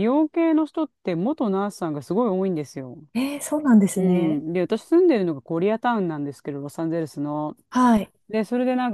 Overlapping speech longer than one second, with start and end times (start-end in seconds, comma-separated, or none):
none